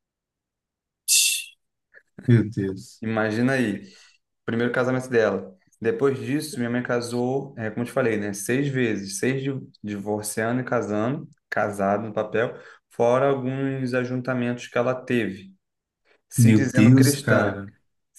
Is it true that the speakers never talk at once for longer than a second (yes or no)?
no